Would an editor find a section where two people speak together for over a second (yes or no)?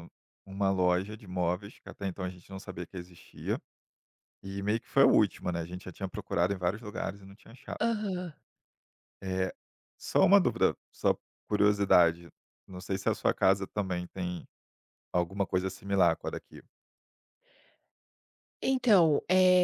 no